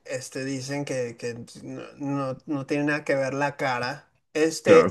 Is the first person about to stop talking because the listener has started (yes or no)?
no